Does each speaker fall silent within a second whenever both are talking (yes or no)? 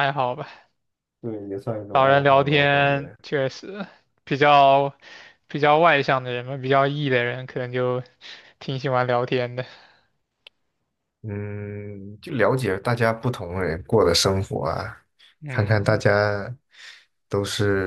no